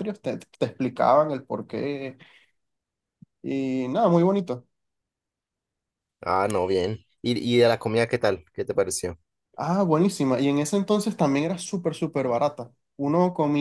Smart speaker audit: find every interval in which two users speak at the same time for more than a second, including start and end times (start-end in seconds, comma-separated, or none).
none